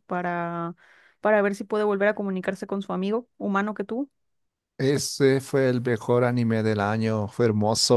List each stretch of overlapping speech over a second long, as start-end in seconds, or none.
none